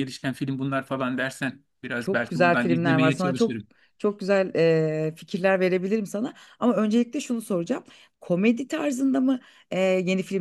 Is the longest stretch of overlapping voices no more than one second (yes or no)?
no